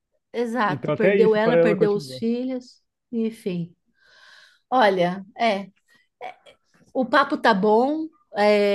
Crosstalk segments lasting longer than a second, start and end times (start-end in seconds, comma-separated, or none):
0.7-2.2